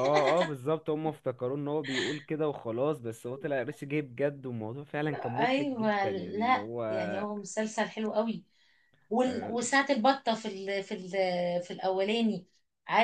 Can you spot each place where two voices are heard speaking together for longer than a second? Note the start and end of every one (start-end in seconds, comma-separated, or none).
5.4-6.8